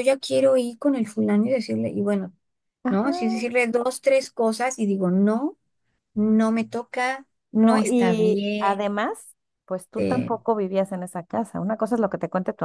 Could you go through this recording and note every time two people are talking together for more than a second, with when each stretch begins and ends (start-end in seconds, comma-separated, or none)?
7.5-8.8